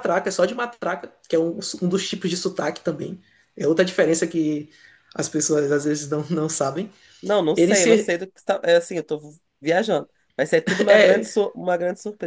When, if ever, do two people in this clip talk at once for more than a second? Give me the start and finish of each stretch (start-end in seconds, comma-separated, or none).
none